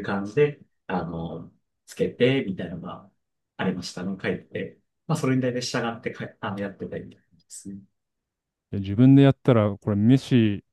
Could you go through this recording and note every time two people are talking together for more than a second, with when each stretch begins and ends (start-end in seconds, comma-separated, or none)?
none